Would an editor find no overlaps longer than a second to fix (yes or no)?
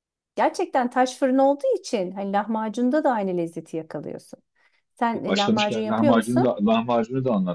no